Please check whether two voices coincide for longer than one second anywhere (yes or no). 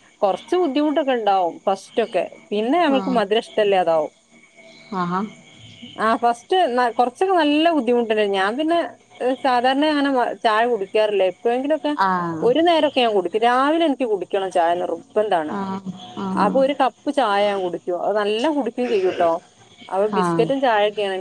no